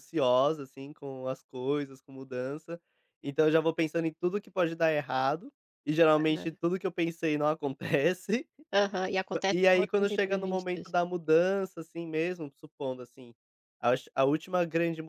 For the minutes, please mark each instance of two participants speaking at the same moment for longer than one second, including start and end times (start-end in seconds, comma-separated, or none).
9.3-10.9